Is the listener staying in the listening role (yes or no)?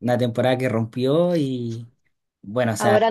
yes